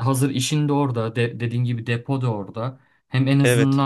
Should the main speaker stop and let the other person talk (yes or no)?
no